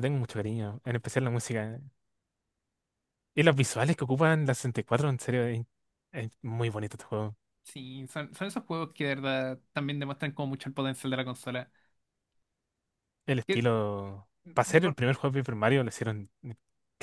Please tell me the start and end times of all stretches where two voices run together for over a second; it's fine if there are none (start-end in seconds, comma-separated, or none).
none